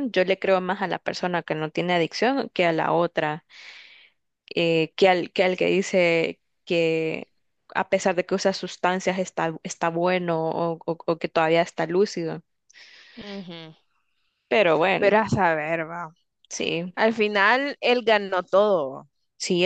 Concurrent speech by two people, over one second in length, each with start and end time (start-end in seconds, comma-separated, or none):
none